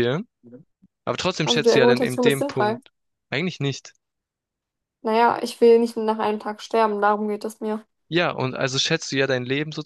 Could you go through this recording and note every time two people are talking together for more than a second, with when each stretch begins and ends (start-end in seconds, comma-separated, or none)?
1.4-2.8